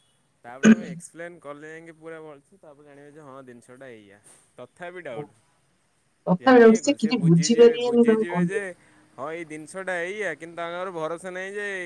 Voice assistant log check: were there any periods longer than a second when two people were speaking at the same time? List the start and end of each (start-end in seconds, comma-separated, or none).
6.5-8.6